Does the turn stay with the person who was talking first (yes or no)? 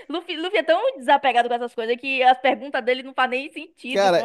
no